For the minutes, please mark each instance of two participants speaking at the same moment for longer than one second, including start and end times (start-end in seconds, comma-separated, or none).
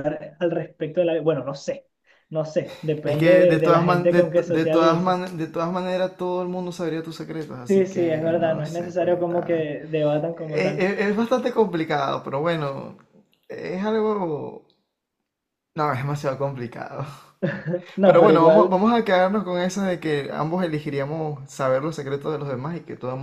3.0-5.2, 7.7-9.7